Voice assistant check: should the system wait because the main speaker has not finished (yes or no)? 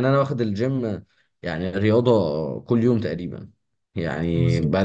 yes